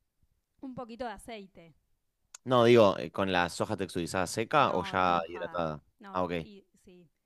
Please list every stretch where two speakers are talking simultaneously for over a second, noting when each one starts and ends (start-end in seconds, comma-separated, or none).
4.6-6.3